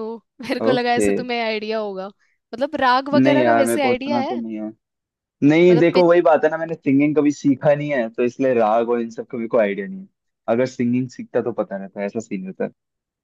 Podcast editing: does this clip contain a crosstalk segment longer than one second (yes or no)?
yes